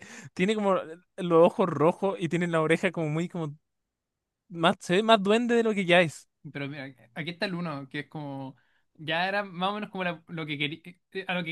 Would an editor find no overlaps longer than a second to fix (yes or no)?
yes